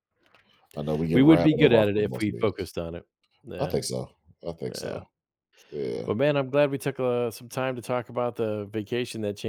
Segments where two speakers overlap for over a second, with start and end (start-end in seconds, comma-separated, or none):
1.1-2.7